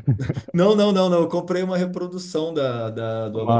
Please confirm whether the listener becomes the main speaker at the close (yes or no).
no